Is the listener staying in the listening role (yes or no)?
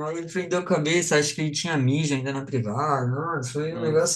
yes